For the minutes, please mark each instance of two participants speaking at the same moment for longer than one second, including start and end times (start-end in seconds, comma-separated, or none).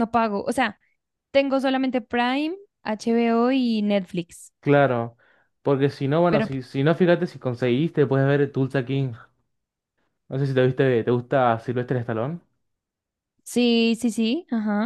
none